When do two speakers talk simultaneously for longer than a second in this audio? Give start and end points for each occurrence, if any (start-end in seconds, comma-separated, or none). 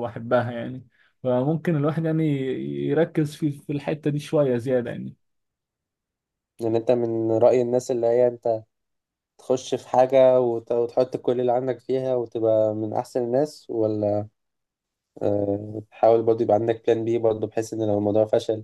none